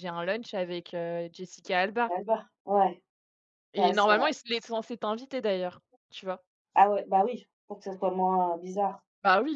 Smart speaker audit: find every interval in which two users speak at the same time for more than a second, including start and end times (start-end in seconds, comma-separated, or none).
none